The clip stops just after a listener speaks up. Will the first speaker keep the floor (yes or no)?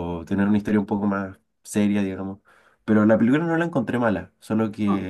yes